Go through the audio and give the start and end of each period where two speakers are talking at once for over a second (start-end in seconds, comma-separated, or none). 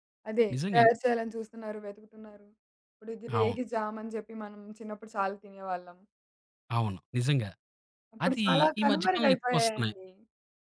8.2-9.9